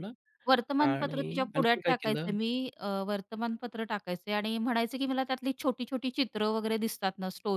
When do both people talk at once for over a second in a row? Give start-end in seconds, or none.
0.8-2.3